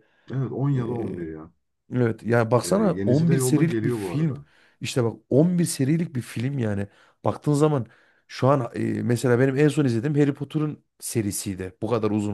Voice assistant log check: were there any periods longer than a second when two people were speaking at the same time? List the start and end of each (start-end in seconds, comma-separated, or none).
2.6-4.3